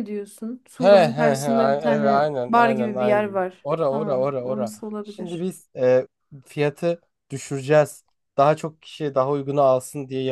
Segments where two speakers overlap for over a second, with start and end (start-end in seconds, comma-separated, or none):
0.8-5.5